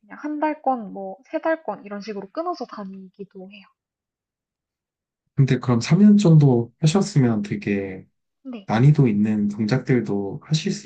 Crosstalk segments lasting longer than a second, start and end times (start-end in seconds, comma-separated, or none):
none